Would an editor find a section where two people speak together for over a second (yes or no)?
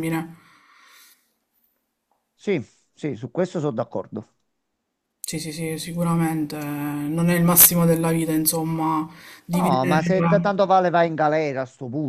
no